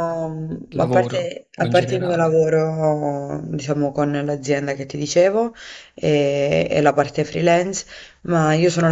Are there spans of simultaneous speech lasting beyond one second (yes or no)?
yes